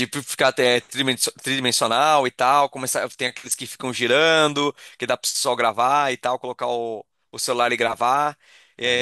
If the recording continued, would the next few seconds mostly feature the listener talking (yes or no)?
no